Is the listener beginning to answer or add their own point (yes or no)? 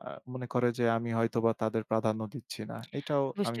yes